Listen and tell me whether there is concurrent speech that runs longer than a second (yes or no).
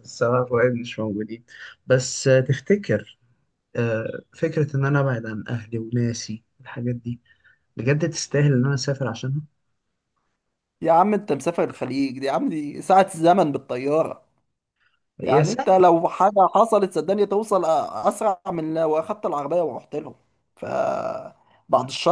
no